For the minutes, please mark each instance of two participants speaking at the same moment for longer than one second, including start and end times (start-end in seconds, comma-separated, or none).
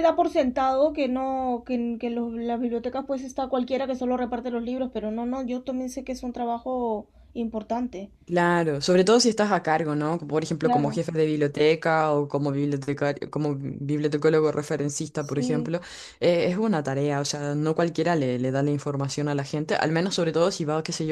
none